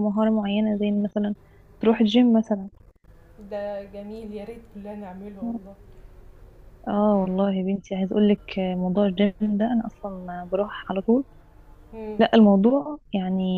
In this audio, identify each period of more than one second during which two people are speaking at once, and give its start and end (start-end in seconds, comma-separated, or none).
none